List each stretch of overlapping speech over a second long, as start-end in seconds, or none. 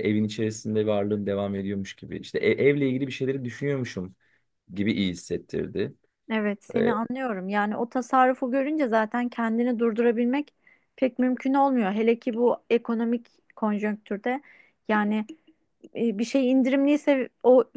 none